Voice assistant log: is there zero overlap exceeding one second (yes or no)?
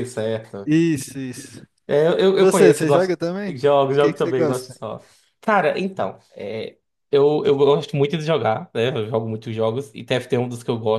no